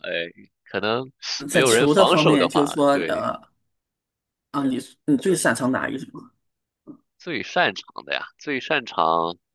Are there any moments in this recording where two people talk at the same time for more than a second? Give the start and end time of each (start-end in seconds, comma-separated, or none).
1.5-3.3